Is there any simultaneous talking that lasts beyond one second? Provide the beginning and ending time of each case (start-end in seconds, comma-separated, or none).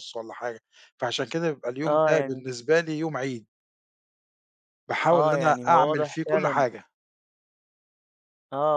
5.1-6.7